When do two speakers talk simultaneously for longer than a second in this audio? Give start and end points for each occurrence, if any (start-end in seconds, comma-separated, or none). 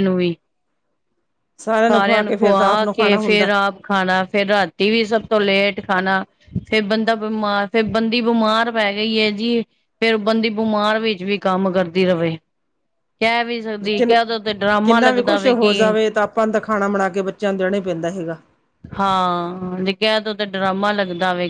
2.0-3.5